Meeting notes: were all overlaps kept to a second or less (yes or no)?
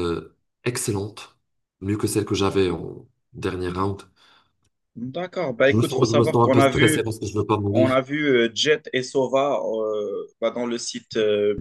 no